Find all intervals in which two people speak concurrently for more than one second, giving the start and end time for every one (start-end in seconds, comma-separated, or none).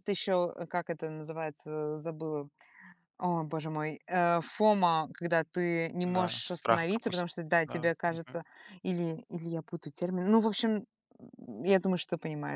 6.0-8.4